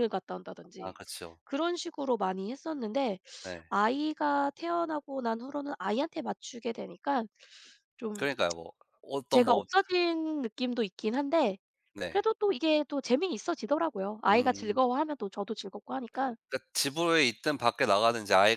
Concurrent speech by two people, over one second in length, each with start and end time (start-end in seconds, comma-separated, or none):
none